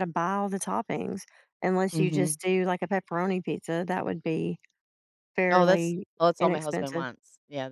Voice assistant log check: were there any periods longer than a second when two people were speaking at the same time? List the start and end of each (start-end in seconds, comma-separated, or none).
5.5-7.1